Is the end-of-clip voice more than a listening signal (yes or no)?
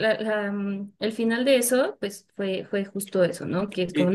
no